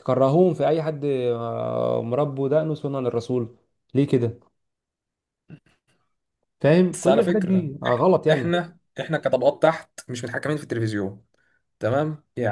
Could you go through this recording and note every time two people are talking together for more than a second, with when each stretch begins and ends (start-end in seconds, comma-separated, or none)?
6.9-8.6